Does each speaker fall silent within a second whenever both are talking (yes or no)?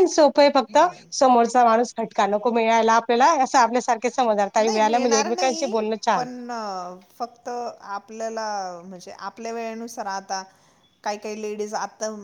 yes